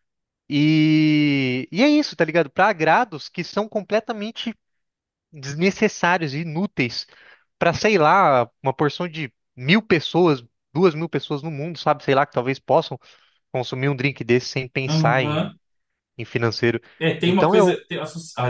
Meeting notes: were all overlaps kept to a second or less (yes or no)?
yes